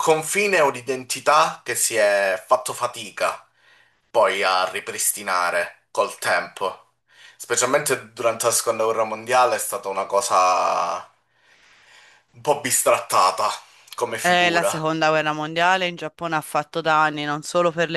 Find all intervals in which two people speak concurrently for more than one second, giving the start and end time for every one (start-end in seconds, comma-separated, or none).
none